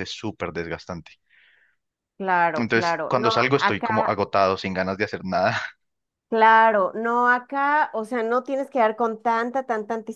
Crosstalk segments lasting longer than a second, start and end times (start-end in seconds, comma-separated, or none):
2.5-4.1